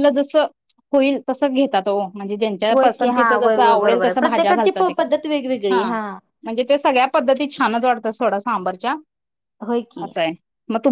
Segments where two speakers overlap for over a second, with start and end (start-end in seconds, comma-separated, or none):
2.7-4.9